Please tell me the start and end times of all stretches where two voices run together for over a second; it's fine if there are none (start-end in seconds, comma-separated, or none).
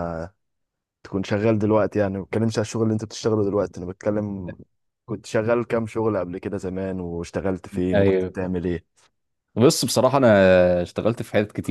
none